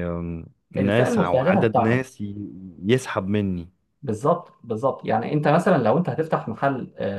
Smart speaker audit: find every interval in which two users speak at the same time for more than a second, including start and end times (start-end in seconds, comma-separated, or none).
0.8-2.1